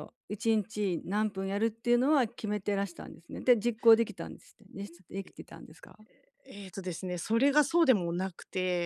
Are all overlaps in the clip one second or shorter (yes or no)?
yes